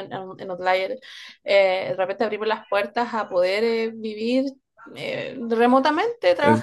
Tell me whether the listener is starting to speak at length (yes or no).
no